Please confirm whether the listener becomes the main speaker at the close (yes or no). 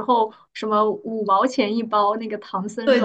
yes